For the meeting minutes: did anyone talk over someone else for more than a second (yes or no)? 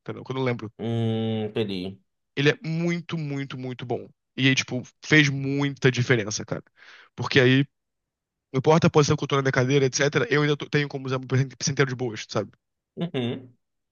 no